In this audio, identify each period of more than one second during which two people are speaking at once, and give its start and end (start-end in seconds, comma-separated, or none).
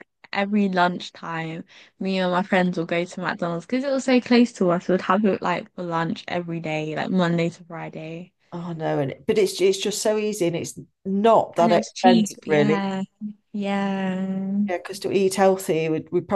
11.6-12.9